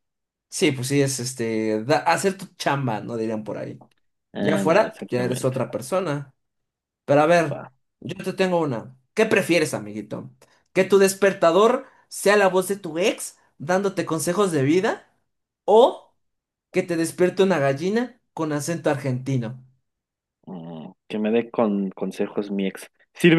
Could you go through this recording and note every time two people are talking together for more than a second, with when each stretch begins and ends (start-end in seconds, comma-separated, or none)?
4.4-5.6